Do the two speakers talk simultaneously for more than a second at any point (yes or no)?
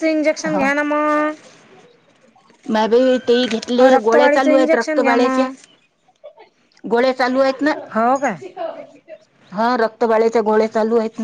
yes